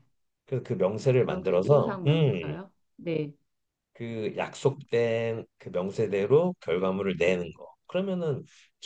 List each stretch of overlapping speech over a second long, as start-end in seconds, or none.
1.2-2.6